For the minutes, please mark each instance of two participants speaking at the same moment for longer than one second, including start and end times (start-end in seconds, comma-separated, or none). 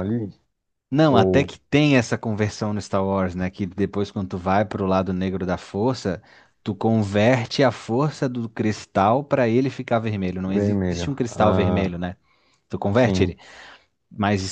10.5-12.0